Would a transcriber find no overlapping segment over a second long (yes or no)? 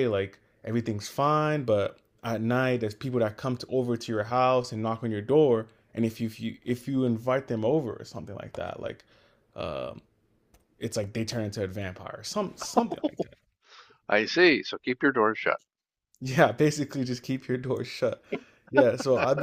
yes